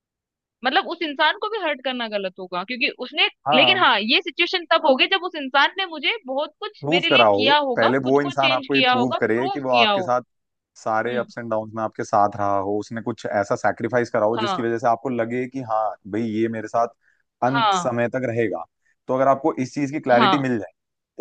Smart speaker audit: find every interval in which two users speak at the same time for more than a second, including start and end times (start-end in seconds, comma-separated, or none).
6.8-10.1